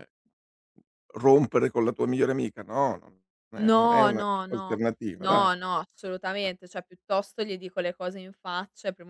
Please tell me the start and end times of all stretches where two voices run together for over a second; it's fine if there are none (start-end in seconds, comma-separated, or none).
3.5-5.8